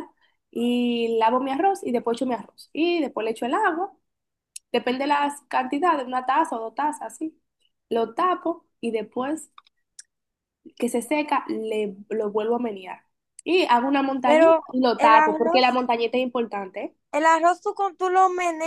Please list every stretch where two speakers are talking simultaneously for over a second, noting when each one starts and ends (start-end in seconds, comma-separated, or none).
14.2-15.8